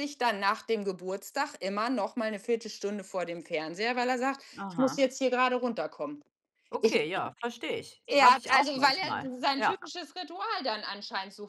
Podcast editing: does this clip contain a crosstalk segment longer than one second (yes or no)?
yes